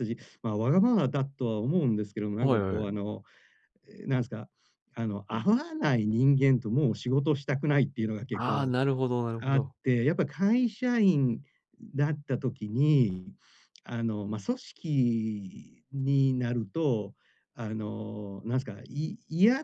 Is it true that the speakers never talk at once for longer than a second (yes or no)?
yes